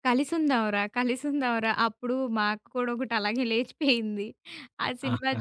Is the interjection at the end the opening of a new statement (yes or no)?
no